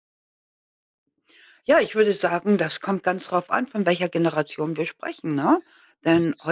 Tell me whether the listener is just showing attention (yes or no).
yes